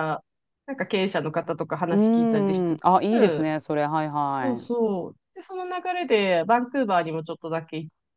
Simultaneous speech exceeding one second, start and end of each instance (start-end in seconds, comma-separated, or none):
1.9-3.5